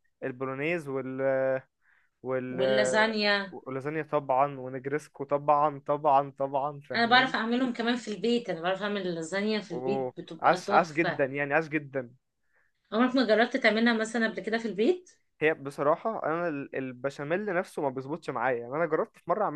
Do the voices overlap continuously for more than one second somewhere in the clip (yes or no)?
yes